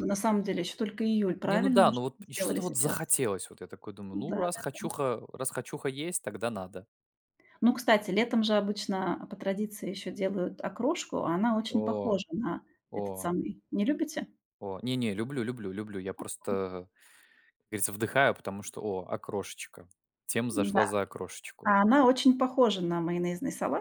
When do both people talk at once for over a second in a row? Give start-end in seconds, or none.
1.4-3.1